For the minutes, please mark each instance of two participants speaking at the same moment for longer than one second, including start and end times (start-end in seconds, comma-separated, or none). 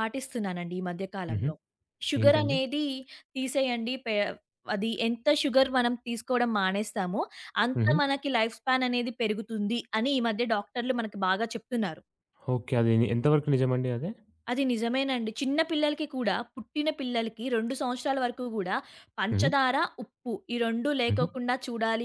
none